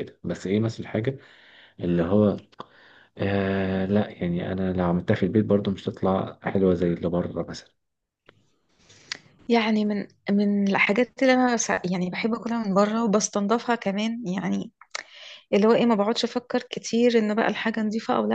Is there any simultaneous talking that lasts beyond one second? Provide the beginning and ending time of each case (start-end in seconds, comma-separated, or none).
none